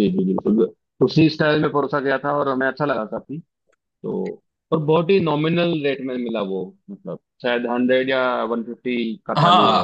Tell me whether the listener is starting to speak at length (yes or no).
yes